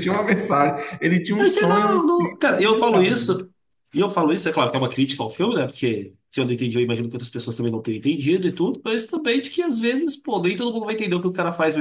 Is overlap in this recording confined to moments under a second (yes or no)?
no